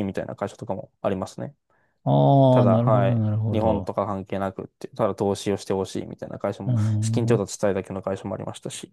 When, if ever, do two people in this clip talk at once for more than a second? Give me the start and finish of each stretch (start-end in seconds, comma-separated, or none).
2.5-3.9